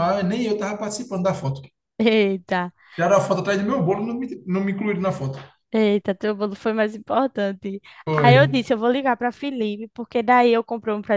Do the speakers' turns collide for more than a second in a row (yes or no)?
no